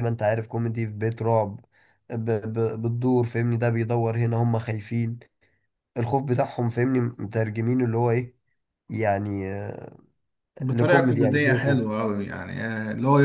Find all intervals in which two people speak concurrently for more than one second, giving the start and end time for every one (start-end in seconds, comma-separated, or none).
10.7-11.9